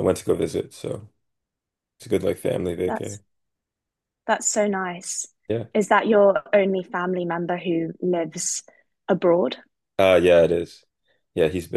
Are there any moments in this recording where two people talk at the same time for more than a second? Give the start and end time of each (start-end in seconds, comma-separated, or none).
none